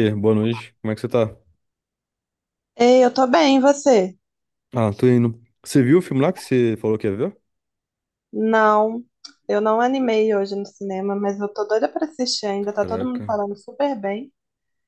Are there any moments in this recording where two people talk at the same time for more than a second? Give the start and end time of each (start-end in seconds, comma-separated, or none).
none